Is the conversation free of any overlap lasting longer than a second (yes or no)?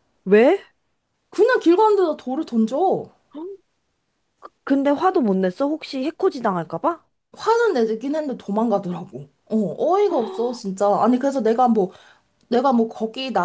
yes